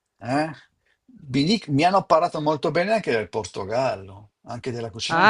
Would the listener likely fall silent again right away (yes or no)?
no